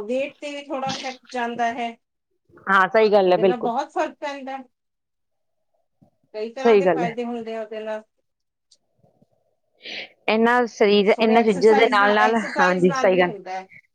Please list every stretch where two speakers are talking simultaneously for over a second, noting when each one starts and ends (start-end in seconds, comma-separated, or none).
11.2-13.3